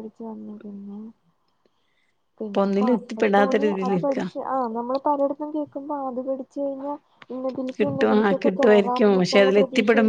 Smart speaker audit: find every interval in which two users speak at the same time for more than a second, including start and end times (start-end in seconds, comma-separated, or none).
2.4-4.2, 7.8-9.2